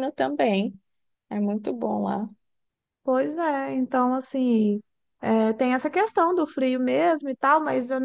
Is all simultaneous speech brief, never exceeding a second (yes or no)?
yes